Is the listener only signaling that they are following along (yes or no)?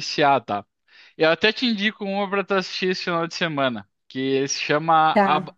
yes